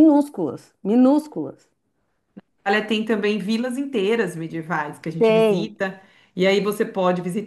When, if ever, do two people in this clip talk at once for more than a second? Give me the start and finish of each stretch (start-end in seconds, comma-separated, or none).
none